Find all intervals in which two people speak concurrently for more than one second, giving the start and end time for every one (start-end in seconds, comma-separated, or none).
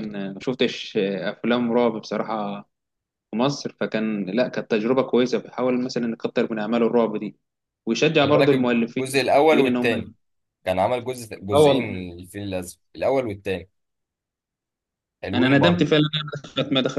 8.2-10.1